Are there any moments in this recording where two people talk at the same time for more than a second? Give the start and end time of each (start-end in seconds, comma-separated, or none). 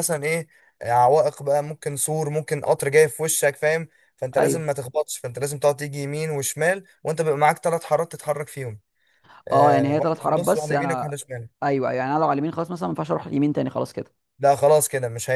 9.5-11.2